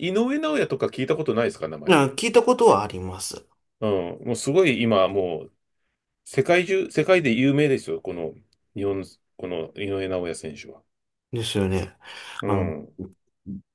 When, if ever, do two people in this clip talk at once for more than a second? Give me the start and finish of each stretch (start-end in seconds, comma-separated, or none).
none